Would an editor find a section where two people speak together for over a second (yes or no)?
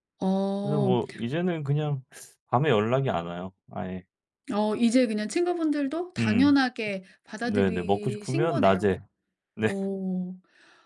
yes